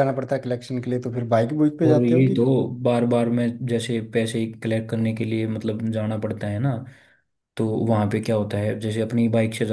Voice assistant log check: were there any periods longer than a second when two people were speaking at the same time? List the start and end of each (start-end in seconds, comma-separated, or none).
none